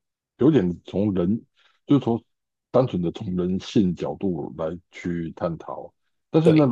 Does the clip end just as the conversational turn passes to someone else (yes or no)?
no